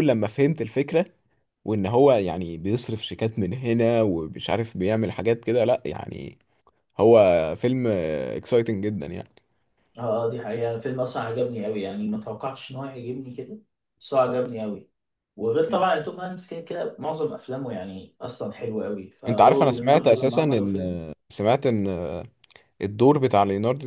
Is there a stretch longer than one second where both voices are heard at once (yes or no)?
yes